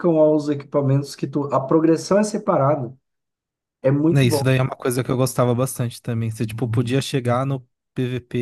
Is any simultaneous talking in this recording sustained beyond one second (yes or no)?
no